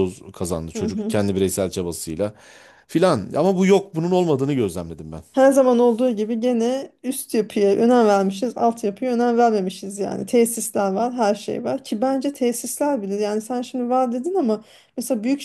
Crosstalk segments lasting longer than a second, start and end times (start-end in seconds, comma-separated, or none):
none